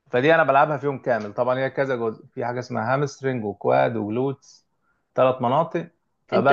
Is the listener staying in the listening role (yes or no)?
no